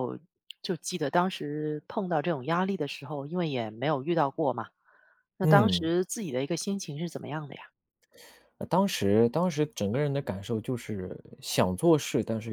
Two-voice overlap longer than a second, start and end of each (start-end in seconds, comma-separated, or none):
none